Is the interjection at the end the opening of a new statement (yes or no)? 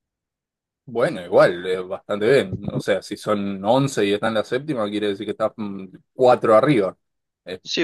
yes